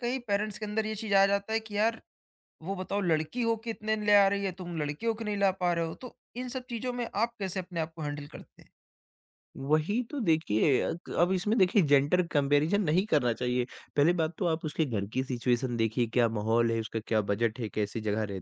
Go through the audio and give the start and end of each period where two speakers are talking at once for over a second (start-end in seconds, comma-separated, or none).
none